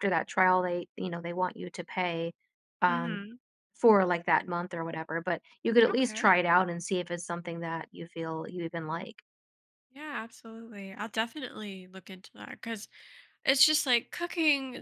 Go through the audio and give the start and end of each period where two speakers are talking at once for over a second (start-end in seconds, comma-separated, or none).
none